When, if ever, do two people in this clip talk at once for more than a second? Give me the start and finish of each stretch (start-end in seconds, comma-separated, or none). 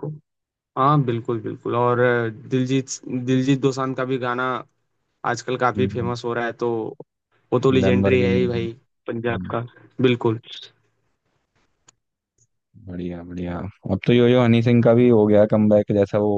none